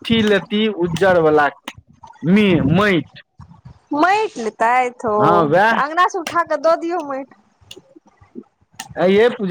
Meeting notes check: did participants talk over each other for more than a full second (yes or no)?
no